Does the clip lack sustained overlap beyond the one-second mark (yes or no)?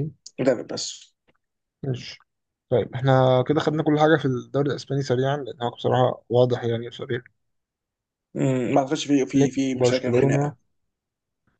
no